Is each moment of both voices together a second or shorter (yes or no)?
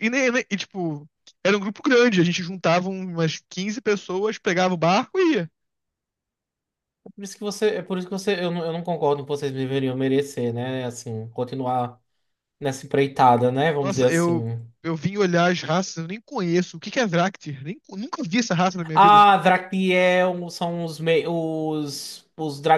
yes